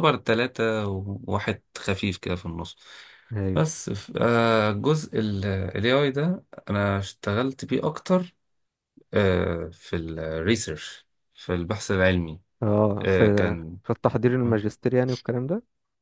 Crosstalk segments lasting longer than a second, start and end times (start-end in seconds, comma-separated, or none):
none